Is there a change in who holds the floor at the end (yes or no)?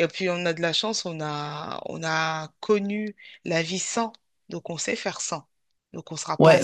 yes